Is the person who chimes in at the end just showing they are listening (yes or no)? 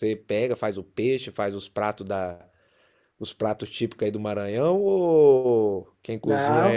no